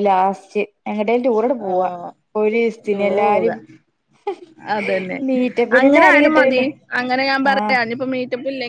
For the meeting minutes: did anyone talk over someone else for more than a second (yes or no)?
no